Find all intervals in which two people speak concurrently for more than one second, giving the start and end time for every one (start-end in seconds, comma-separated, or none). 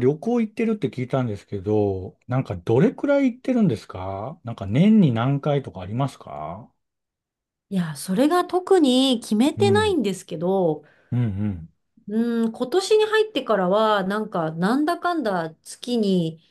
none